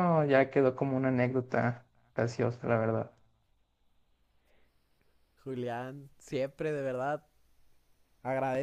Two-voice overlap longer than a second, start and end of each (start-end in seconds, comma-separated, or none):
none